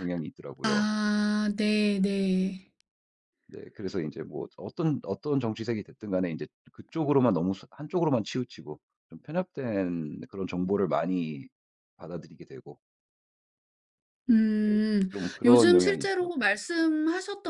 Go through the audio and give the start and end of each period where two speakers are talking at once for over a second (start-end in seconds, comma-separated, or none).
14.7-16.5